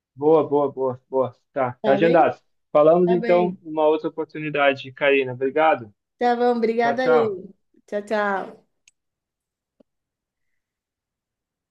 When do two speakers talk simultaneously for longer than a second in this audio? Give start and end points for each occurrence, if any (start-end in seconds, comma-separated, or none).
none